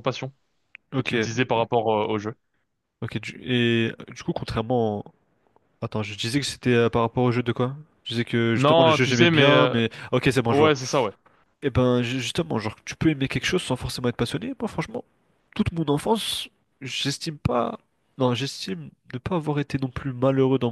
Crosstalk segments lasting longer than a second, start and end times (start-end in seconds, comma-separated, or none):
8.6-9.8